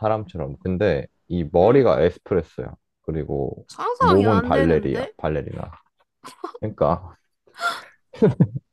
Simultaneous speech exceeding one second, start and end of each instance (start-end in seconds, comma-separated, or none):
3.7-5.1